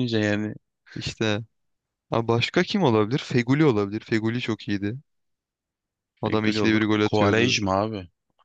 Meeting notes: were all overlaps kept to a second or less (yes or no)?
no